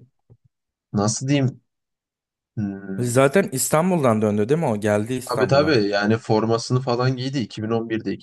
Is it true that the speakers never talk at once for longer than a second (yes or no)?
yes